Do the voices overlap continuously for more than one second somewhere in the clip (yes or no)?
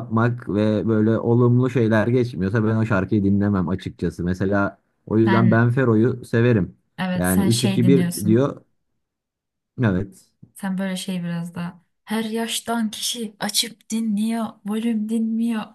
yes